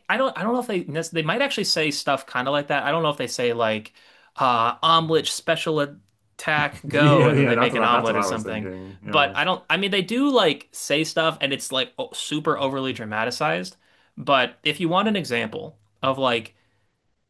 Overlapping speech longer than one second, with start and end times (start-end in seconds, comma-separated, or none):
6.8-9.3